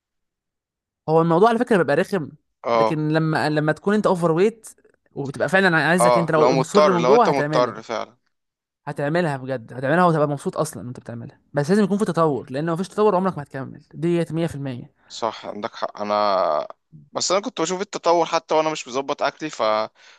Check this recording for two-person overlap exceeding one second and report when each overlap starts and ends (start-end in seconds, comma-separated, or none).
6.0-7.8